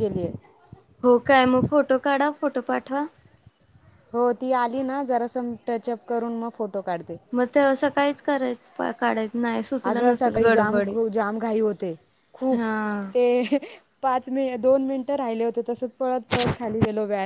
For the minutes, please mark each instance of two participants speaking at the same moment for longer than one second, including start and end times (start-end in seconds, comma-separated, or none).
none